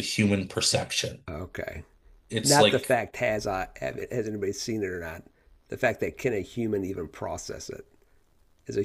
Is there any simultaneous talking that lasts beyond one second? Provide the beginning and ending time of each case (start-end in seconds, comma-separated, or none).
none